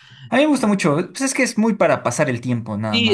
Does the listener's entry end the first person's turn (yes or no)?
yes